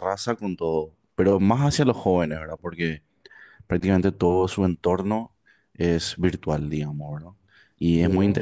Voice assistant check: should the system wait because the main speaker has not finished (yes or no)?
yes